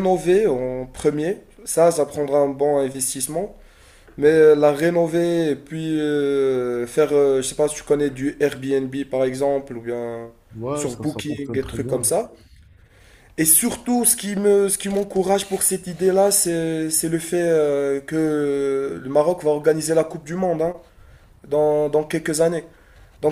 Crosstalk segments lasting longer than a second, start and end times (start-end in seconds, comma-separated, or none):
10.7-12.1